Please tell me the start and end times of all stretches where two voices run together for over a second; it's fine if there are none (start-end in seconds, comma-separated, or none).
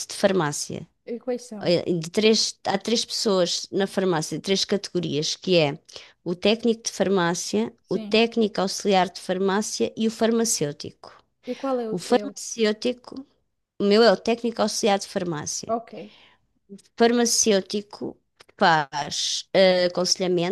none